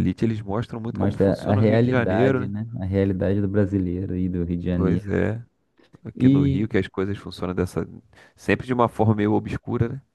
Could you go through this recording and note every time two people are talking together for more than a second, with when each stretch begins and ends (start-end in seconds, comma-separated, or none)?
0.9-2.5